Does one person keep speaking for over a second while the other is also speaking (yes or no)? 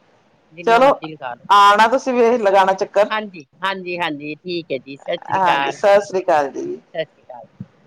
yes